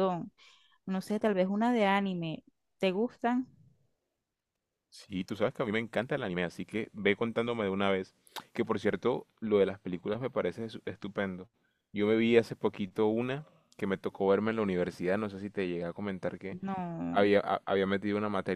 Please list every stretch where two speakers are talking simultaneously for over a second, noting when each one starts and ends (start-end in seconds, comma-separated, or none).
none